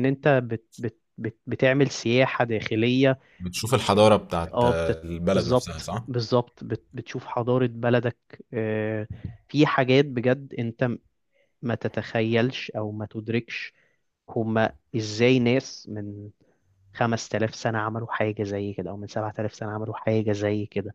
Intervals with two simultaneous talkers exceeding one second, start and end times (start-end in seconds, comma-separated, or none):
4.5-6.0